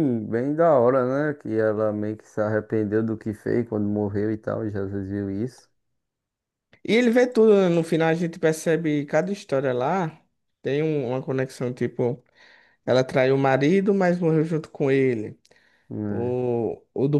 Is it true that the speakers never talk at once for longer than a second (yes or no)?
yes